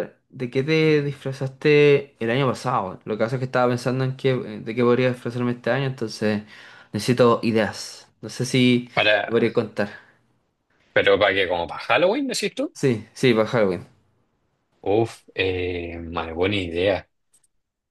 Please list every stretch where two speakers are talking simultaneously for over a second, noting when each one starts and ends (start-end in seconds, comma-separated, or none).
none